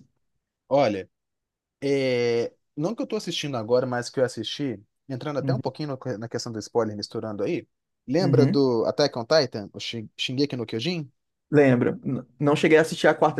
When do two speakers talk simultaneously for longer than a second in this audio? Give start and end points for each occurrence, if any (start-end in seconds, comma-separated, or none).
none